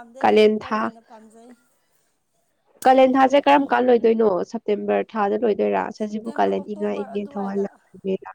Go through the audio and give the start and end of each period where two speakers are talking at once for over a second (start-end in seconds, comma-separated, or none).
6.1-7.6